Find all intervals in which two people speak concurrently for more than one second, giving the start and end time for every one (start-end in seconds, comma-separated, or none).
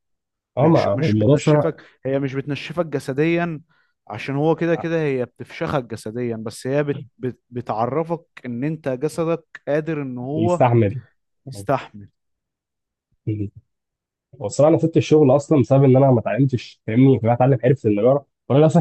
0.6-1.8